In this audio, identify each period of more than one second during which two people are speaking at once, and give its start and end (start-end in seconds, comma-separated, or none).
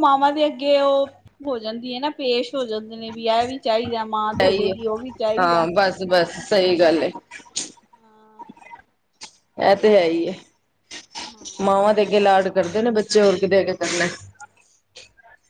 none